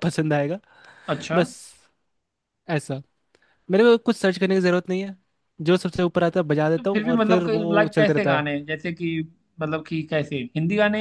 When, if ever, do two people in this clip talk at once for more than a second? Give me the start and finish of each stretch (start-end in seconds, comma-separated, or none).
6.8-8.4